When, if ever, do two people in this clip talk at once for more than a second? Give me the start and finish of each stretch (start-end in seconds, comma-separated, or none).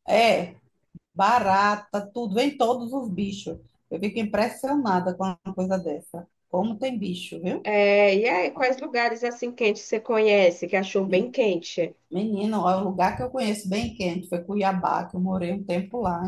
none